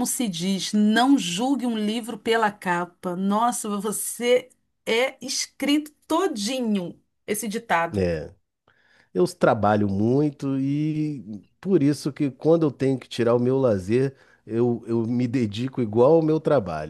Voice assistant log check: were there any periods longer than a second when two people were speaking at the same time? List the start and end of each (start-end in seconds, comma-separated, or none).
none